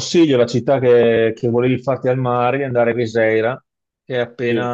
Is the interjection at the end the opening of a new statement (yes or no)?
no